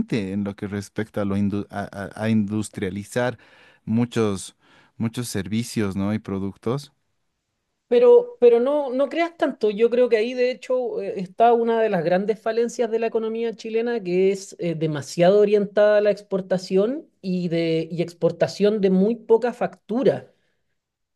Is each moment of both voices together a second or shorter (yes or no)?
yes